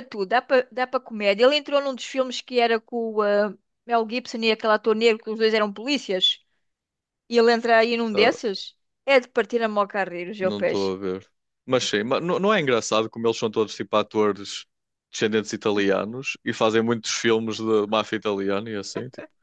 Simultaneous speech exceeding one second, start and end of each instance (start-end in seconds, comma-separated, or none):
none